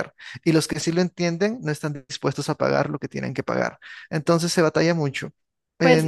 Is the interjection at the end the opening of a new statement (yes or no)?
yes